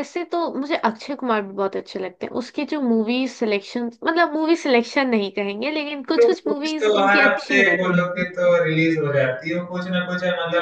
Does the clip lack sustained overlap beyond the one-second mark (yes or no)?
no